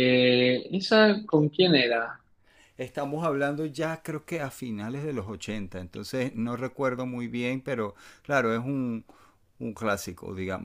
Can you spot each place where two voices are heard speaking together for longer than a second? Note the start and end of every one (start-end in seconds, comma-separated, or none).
none